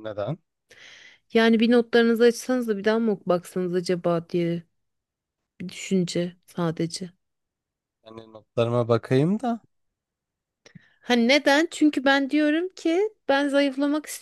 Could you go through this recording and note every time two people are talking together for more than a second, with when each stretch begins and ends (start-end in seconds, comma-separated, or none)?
none